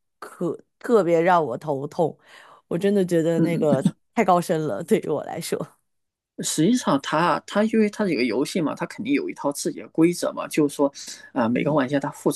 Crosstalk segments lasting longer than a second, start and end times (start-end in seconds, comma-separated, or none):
none